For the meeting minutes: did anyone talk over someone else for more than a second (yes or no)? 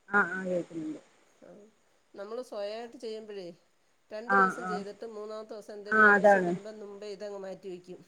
no